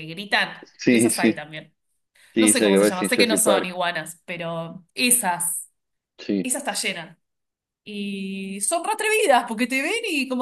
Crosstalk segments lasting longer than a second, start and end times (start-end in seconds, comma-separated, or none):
2.4-3.8